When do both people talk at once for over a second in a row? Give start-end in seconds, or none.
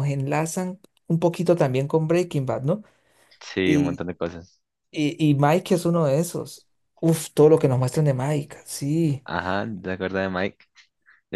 none